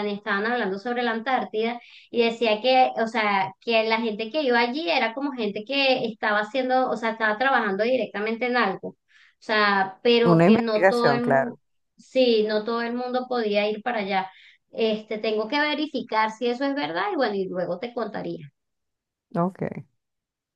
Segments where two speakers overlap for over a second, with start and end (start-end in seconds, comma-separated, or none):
10.2-11.5